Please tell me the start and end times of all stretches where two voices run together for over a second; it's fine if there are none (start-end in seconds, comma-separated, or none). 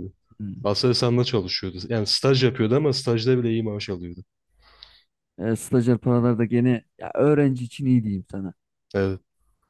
none